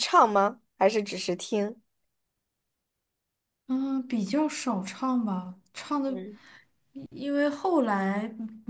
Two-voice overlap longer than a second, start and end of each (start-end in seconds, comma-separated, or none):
none